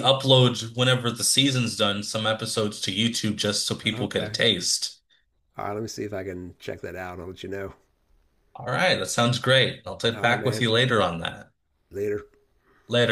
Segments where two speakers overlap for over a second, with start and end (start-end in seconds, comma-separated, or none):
none